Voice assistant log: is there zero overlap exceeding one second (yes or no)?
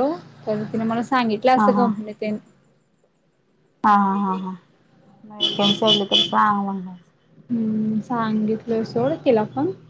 yes